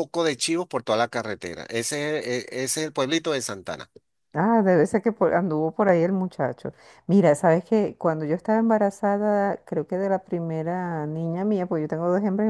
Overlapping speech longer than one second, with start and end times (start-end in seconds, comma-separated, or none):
none